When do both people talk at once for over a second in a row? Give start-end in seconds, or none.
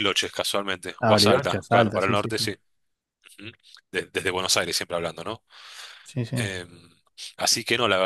1.0-2.5